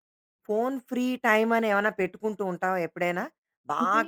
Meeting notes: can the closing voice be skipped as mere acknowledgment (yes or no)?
yes